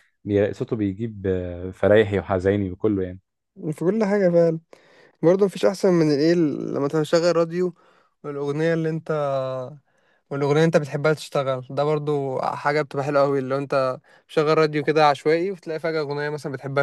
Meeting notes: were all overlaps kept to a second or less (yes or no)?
yes